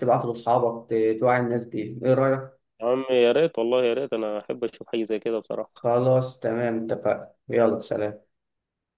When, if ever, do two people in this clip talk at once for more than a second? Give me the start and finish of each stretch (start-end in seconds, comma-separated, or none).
none